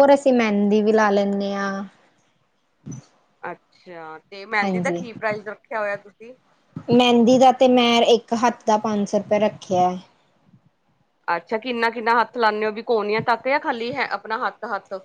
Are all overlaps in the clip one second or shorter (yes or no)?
yes